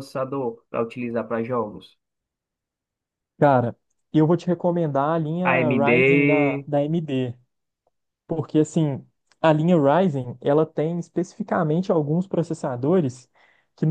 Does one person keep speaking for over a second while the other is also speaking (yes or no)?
yes